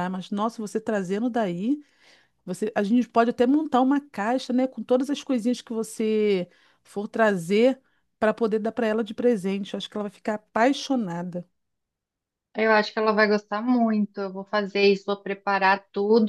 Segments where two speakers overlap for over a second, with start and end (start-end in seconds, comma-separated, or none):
none